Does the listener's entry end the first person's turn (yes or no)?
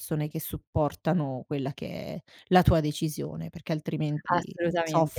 yes